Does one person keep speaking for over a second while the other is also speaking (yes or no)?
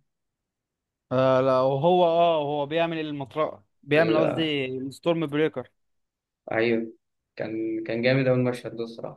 no